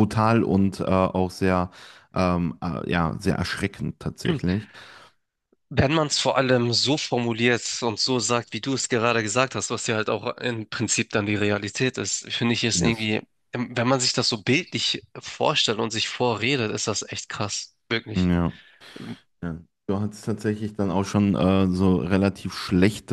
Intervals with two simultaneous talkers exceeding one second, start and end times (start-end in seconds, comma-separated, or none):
none